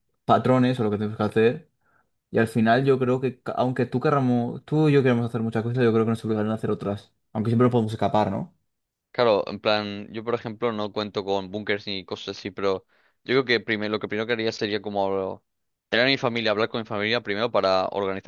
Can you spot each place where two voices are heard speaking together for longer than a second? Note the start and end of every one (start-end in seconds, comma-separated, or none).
none